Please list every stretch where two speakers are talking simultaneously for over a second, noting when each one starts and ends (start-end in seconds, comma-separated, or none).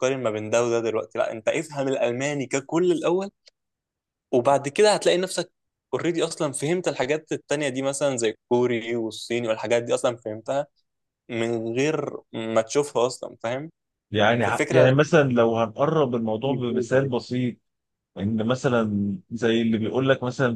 none